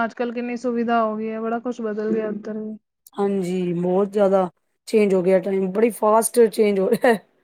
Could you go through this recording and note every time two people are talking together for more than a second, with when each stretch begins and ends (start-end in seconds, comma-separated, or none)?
none